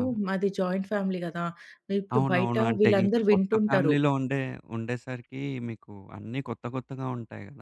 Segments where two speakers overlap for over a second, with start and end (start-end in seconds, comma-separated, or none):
2.1-4.0